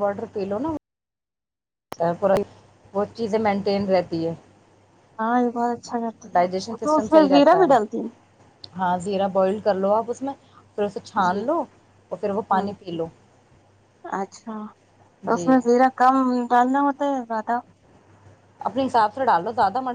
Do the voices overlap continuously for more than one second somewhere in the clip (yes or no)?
no